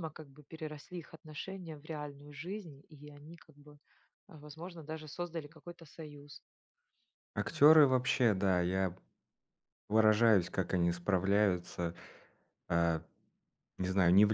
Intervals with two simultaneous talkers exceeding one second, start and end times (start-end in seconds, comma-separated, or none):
none